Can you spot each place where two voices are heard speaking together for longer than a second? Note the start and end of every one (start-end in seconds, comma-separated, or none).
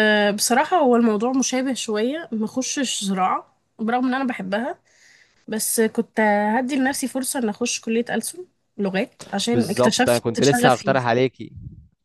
9.5-11.0